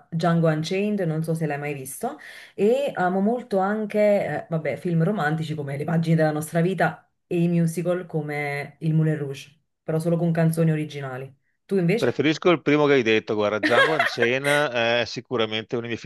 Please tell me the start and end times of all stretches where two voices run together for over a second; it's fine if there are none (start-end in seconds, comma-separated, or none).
none